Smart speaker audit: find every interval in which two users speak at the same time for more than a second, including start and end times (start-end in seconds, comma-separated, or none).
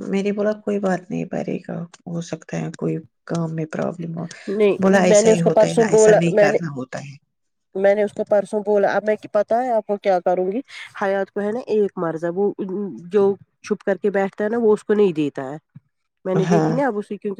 4.8-6.6